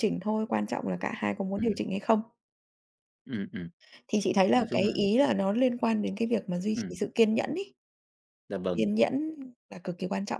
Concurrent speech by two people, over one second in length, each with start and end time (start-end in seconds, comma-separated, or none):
none